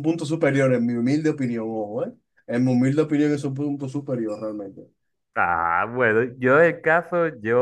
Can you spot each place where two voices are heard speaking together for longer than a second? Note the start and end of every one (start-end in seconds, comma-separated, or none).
none